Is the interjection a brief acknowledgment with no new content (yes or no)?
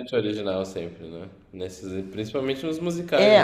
no